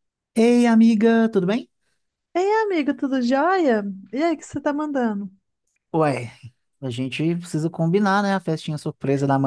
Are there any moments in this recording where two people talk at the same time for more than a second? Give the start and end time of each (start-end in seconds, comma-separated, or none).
none